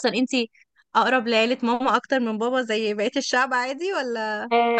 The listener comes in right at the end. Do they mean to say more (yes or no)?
yes